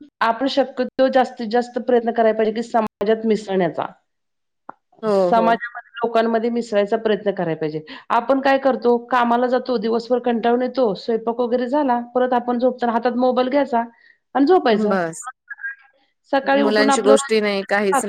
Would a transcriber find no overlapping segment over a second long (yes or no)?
yes